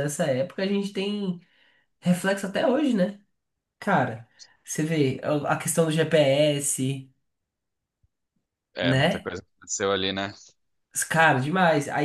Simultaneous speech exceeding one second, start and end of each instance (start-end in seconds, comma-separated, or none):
none